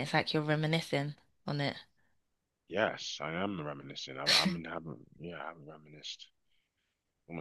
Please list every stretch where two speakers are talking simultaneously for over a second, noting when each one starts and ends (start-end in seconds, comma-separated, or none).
none